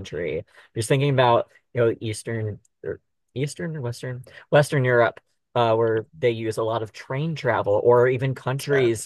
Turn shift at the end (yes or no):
no